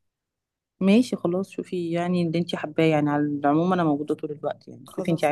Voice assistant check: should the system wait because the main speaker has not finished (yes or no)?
yes